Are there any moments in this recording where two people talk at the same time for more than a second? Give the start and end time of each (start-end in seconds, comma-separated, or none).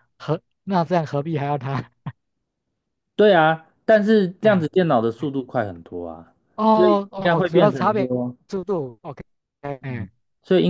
6.7-8.1